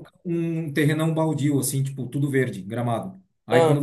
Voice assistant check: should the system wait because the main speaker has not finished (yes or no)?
yes